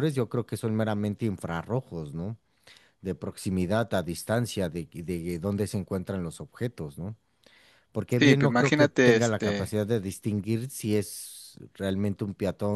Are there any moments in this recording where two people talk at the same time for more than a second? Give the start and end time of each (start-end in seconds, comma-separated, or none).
8.2-9.8